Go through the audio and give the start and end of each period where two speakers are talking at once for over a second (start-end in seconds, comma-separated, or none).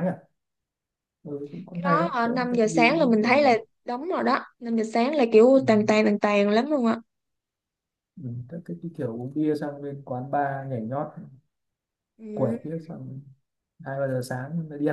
1.7-3.6